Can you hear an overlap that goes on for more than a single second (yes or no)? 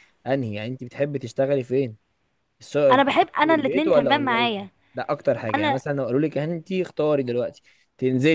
yes